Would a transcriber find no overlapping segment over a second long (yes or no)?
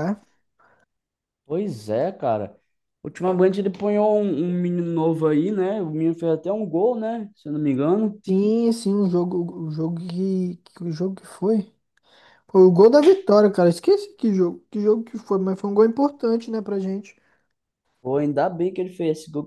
yes